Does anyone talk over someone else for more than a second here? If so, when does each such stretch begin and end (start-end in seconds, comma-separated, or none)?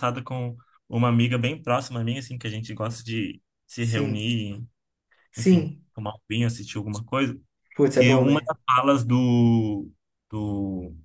none